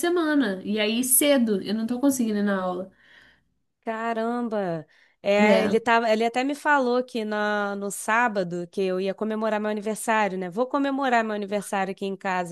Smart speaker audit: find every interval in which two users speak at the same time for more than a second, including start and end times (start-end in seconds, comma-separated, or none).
none